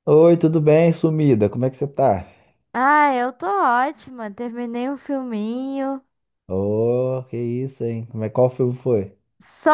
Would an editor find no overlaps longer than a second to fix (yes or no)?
yes